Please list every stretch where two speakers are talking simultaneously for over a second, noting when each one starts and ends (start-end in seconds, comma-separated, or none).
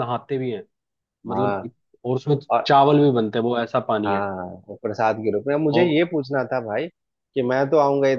none